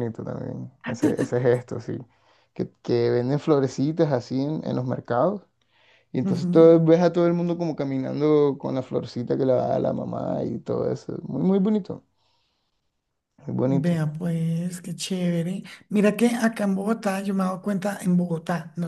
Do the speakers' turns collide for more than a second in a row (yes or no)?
no